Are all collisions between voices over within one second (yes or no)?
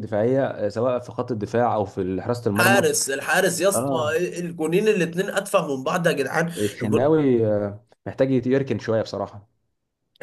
yes